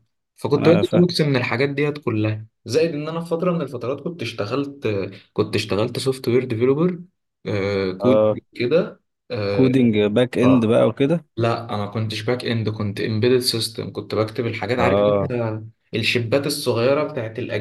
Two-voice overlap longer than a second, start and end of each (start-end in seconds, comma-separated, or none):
none